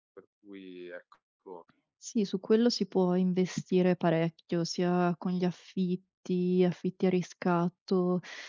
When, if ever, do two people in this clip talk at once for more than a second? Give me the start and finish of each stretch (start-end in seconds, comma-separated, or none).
none